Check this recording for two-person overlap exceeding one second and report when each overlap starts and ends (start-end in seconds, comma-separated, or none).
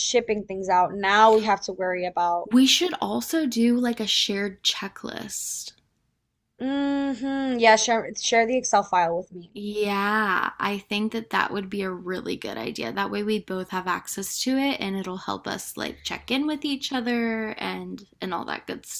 none